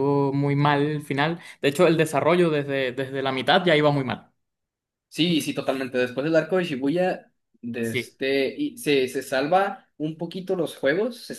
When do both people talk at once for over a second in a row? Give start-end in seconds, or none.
none